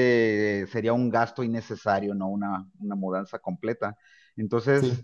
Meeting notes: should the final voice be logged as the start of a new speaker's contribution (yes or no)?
no